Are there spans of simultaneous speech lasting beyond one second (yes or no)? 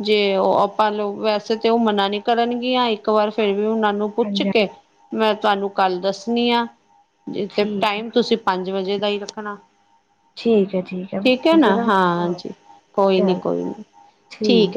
no